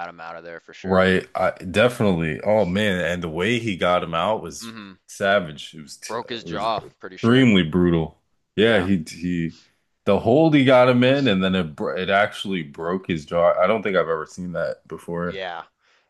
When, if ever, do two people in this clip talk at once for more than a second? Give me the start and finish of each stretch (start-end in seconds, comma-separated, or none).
6.1-7.5